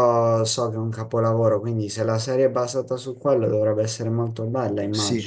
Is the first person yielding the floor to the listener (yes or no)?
yes